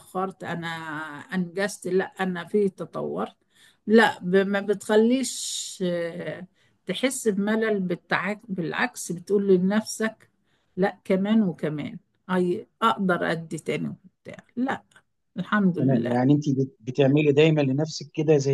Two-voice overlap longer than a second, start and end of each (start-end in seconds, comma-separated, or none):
none